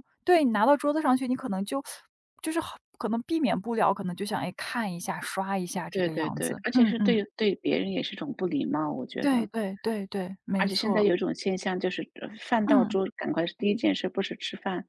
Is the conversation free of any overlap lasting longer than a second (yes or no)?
no